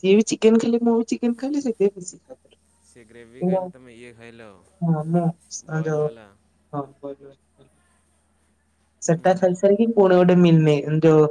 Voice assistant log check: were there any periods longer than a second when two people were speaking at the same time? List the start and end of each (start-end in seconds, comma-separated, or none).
none